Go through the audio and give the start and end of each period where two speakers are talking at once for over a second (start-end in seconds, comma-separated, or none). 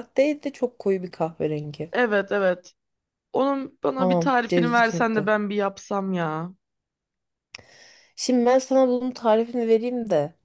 4.0-5.3